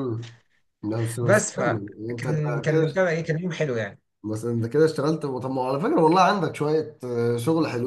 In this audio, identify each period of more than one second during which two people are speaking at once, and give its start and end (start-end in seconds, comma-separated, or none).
1.2-3.0